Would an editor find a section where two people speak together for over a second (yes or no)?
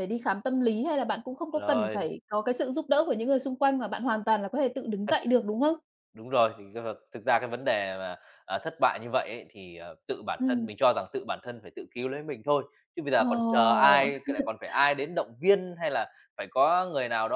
no